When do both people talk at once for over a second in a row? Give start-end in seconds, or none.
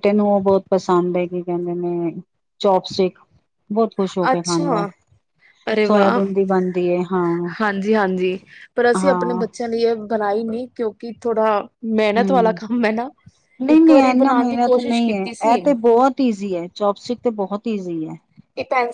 13.8-15.6